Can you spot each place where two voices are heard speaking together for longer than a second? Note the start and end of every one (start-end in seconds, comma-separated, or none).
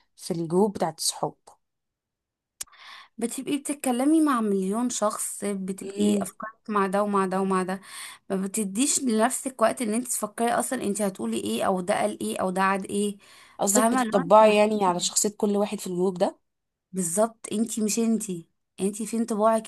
13.6-15.1